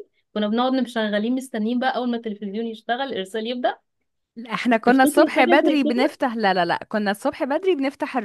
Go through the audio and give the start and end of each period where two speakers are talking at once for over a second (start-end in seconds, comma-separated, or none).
4.8-6.2